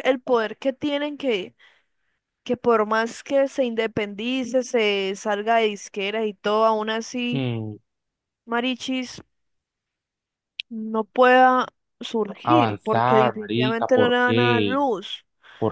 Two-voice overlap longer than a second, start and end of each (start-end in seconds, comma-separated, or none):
12.4-14.8